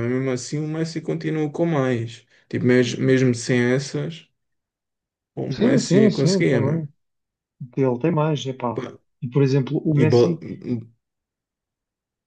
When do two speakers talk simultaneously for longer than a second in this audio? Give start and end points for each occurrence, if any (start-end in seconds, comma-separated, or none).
5.5-6.9